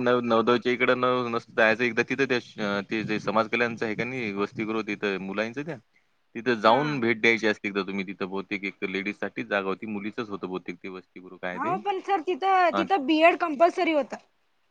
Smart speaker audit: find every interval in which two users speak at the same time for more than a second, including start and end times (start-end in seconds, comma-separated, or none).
none